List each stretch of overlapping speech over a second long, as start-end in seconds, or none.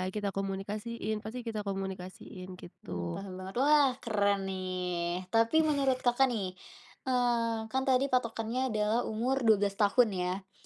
none